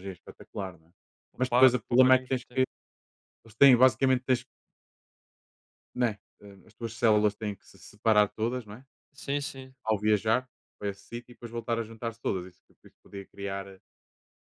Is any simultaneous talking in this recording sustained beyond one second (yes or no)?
yes